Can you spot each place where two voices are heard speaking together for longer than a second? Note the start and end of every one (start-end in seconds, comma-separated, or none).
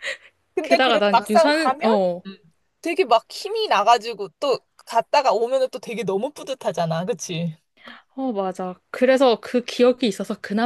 0.6-2.2